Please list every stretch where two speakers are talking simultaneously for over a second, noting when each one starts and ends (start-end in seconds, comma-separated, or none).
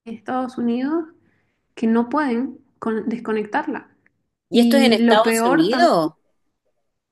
4.5-6.1